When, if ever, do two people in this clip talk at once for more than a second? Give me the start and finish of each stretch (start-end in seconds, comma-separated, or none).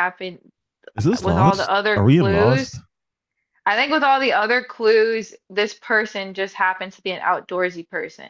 1.2-2.8